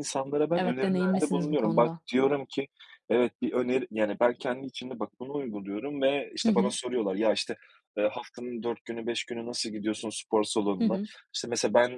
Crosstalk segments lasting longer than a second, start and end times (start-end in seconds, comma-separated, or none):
0.6-2.0